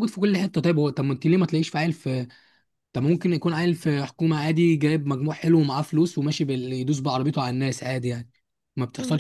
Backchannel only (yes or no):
no